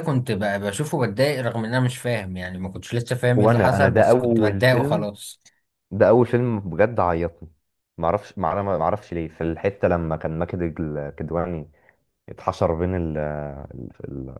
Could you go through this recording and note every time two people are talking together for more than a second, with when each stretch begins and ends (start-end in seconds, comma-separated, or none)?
3.4-5.1